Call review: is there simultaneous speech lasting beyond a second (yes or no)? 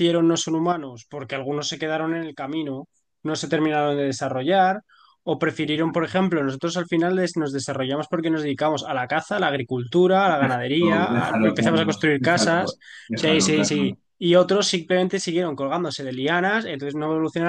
yes